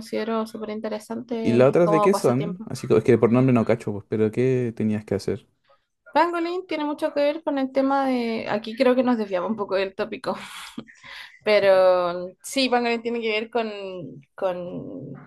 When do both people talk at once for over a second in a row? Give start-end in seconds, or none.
1.4-2.7